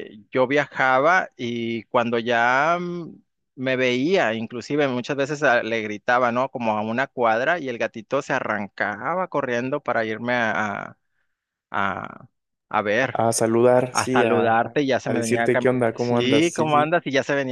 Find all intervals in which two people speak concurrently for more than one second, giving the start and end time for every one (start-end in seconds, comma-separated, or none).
13.9-16.9